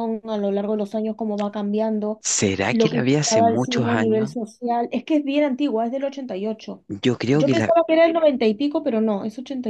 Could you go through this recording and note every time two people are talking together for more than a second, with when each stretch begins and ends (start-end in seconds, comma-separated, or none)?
2.7-4.3